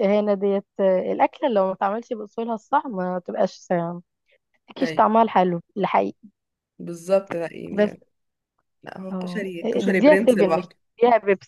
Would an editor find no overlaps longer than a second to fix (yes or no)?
no